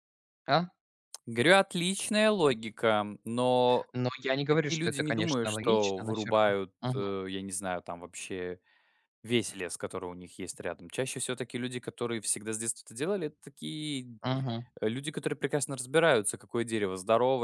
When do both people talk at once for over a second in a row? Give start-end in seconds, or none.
4.5-7.1